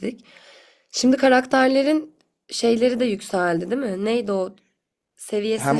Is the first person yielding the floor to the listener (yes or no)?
yes